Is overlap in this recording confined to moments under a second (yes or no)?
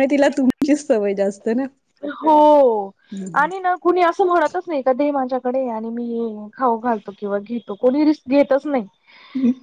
yes